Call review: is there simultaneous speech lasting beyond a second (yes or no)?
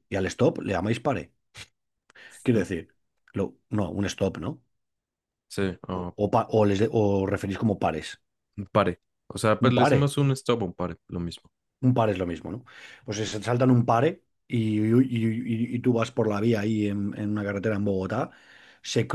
no